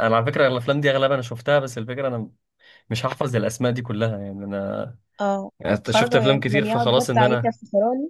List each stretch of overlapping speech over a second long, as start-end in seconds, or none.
5.9-7.5